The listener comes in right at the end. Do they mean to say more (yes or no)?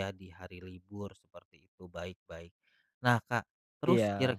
no